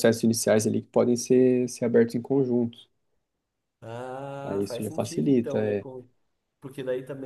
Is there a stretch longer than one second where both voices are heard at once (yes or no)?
yes